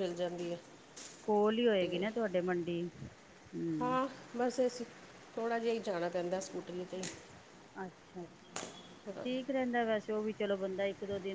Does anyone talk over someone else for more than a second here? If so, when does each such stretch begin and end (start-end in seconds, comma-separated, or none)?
none